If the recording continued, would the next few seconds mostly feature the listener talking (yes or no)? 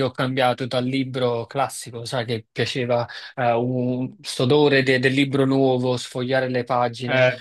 no